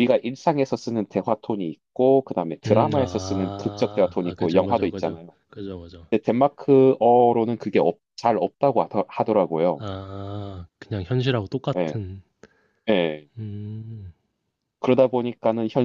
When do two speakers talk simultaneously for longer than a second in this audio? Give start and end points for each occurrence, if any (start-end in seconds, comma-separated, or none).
2.7-5.3